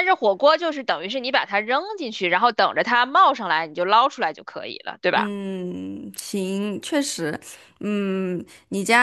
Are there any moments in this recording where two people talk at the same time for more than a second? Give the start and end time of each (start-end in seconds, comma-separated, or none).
none